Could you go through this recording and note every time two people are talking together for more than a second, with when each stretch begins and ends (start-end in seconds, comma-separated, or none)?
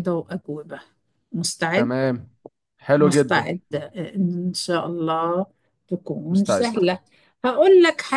none